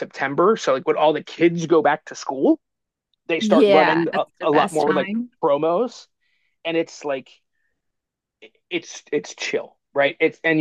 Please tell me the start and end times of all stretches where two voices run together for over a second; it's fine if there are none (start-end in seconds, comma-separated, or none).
3.4-5.3